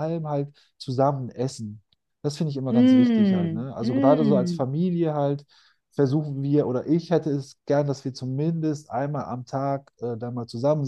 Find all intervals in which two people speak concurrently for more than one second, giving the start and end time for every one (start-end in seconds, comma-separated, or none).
2.7-4.7